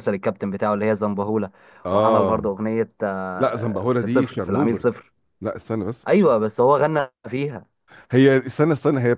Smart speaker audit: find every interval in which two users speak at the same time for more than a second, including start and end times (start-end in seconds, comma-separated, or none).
3.4-5.0